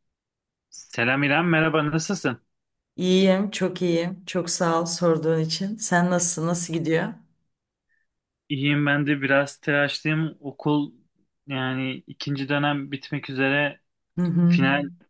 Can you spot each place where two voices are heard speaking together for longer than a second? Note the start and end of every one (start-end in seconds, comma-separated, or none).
none